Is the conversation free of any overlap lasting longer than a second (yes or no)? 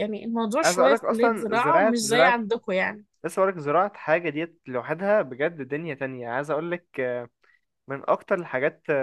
no